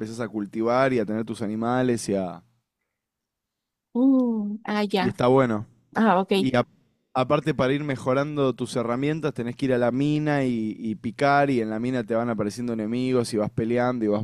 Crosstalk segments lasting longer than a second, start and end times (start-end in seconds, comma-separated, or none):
none